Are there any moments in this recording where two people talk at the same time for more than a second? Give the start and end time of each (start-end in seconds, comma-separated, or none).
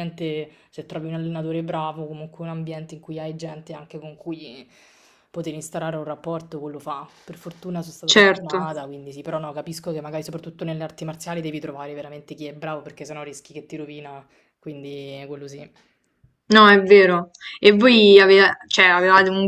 none